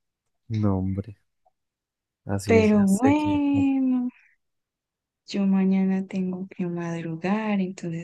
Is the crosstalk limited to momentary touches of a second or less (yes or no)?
no